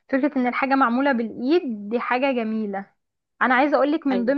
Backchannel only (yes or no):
yes